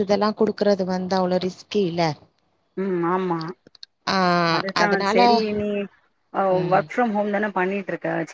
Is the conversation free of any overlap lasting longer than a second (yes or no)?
yes